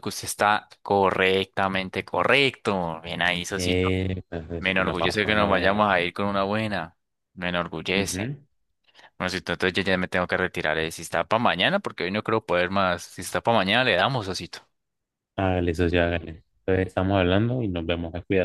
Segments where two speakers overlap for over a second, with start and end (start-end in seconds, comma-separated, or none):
4.6-5.9